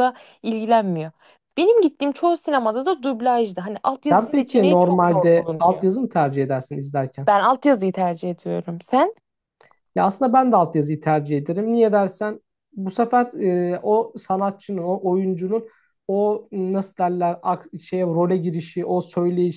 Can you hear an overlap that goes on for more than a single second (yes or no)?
yes